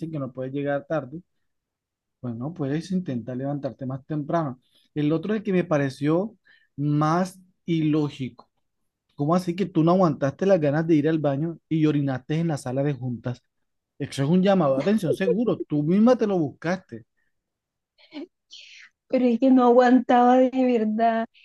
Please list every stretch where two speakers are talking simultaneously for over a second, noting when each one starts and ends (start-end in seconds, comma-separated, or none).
none